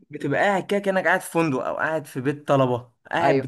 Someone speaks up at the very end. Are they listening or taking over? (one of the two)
listening